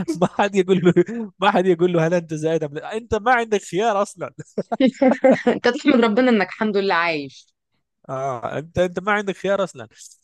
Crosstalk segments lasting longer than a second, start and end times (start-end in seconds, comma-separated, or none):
none